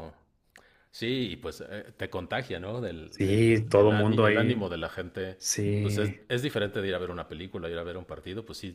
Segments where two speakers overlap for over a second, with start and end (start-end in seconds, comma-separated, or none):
3.1-4.7